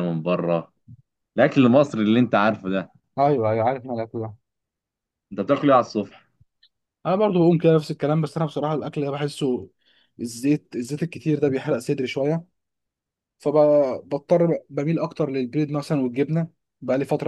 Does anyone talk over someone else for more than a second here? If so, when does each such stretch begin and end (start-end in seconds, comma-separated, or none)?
none